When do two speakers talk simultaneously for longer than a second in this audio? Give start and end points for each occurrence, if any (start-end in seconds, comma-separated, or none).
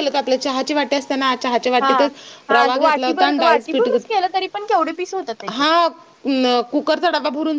2.5-3.9